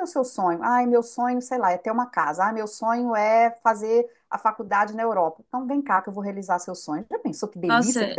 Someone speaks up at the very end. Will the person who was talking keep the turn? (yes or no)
no